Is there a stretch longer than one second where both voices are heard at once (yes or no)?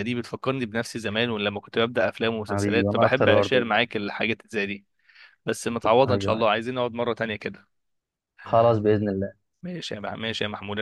yes